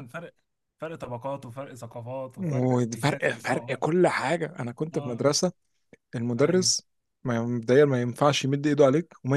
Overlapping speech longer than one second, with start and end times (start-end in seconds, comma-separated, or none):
2.4-3.8